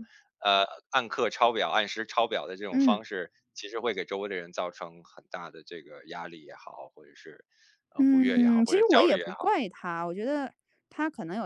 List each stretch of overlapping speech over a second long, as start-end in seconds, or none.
8.0-9.5